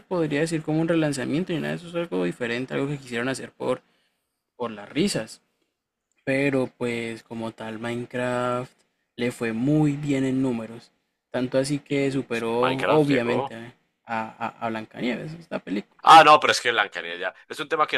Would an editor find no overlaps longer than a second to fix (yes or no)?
no